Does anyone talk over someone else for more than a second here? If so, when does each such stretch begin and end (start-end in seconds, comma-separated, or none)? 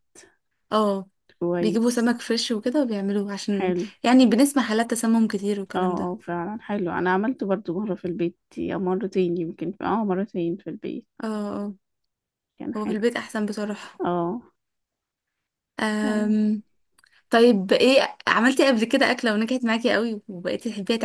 none